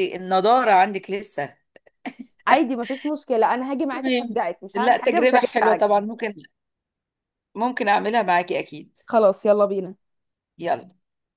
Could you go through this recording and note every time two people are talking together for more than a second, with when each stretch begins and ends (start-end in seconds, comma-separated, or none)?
3.9-5.9